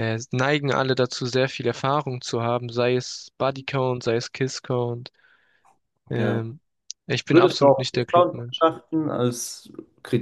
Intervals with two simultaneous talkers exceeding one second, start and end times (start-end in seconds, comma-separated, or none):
7.3-8.7